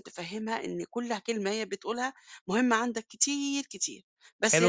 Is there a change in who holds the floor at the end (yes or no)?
yes